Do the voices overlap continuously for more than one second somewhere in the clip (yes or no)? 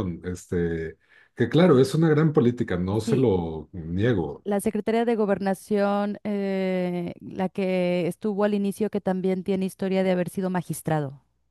no